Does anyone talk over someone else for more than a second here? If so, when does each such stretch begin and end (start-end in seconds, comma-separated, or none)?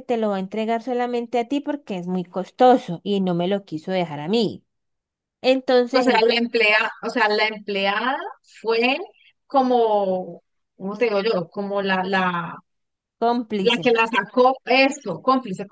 none